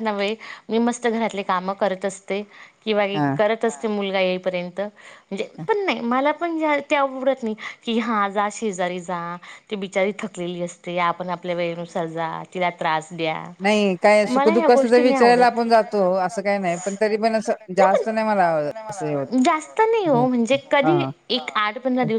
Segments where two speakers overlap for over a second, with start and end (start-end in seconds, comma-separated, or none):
14.3-15.8